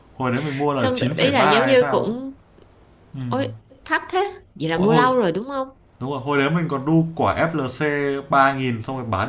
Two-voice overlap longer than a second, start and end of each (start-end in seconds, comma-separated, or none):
0.7-2.1